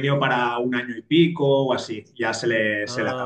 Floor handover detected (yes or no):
no